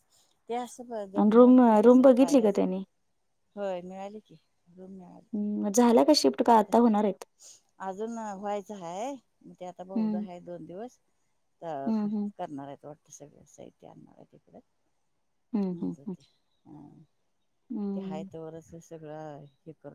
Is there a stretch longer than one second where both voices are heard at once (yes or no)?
yes